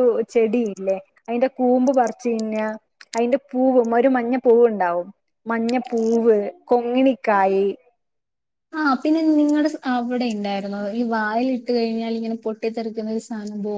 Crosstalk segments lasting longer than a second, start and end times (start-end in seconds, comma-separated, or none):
none